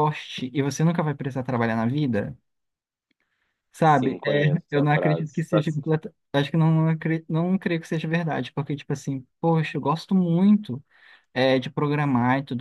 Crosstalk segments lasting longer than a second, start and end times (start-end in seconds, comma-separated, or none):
3.8-5.6